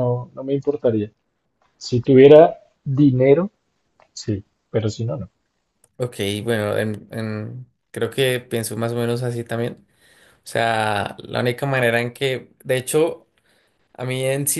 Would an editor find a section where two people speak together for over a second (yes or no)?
no